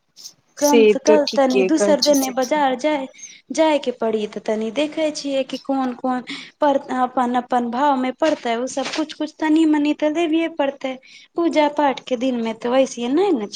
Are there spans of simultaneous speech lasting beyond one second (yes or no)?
yes